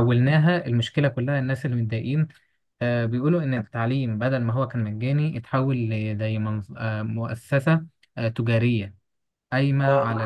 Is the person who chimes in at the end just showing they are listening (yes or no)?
yes